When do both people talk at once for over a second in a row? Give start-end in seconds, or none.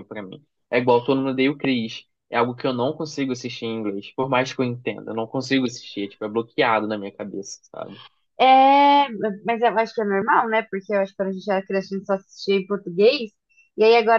none